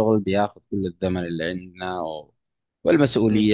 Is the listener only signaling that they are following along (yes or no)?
yes